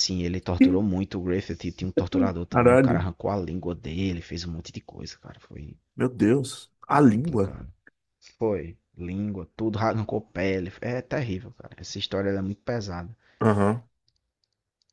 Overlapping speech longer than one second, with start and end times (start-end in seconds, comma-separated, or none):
none